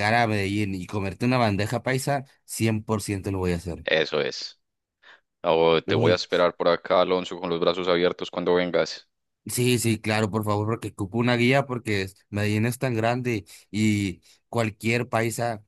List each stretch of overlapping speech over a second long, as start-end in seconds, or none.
none